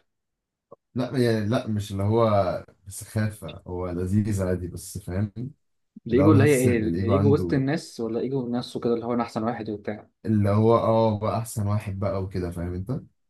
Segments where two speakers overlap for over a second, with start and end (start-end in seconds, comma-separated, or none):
6.1-7.6